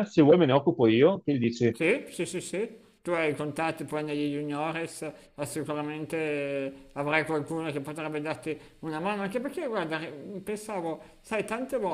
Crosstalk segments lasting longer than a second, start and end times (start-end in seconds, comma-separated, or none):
none